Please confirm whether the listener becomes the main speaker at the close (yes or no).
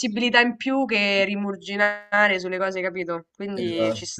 yes